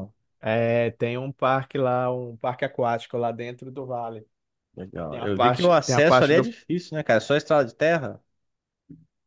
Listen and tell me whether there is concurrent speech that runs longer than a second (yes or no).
yes